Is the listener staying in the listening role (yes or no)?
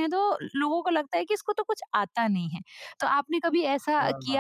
yes